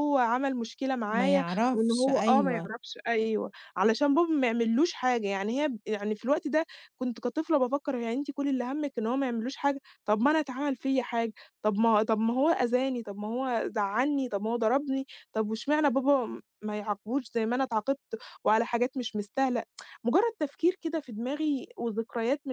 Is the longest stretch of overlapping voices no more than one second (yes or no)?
no